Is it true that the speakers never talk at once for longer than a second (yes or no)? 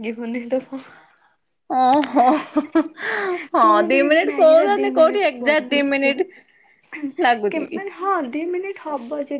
no